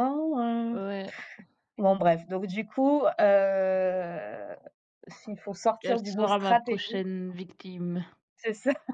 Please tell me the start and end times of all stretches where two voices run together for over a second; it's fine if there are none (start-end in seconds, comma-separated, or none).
5.8-7.0